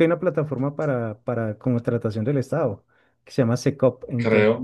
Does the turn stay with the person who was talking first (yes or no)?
yes